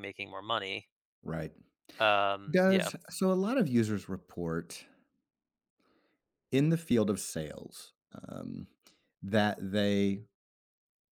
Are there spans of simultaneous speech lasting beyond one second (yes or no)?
no